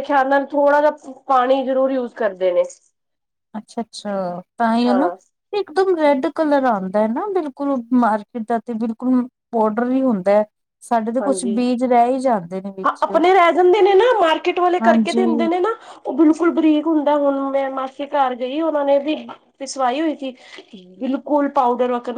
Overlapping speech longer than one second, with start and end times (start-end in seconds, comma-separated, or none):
none